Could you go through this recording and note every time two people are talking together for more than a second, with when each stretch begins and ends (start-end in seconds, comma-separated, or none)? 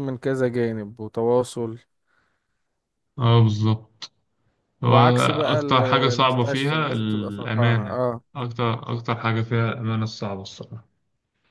4.8-8.0